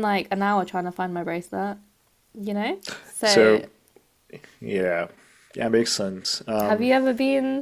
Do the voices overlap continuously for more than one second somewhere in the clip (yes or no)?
no